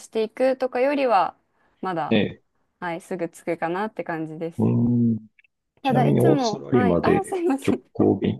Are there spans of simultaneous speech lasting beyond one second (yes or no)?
yes